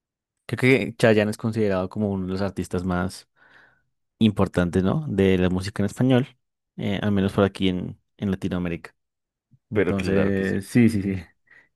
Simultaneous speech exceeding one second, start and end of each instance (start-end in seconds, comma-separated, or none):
9.7-11.2